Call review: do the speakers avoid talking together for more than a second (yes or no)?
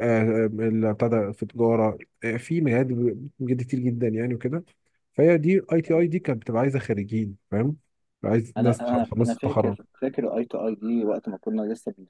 no